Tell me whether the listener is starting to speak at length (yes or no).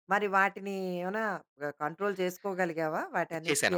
yes